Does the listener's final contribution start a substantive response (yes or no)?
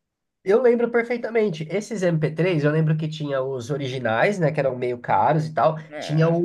no